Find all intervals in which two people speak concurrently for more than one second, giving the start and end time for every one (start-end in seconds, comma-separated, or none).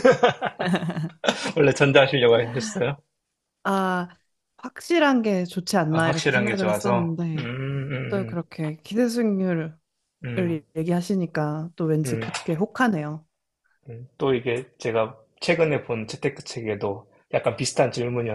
5.9-7.5